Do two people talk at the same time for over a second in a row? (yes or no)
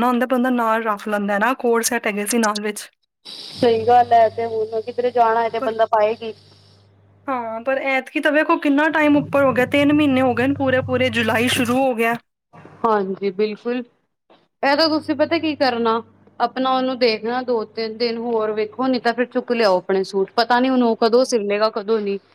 no